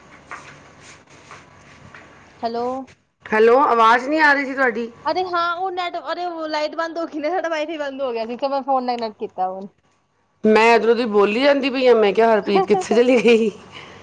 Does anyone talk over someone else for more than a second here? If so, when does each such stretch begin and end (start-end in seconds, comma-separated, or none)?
none